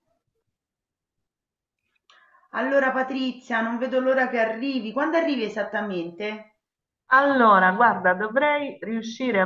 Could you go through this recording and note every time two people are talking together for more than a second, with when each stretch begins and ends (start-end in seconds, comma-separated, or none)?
none